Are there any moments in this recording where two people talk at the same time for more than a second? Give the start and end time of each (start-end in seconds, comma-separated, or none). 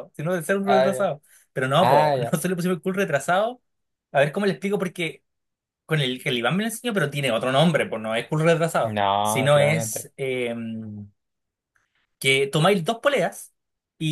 8.8-10.1